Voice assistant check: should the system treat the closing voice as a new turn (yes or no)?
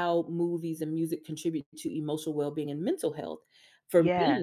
no